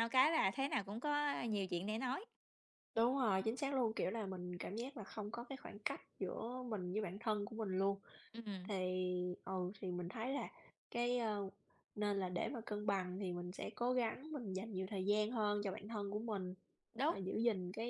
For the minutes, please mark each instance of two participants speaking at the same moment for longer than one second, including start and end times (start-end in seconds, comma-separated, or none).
none